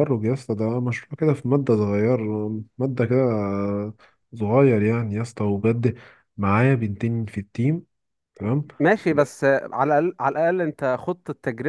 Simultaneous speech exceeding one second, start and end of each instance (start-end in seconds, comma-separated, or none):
none